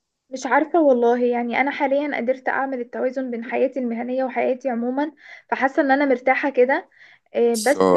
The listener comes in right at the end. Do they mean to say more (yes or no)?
yes